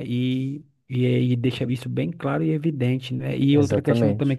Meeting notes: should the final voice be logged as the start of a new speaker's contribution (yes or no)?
no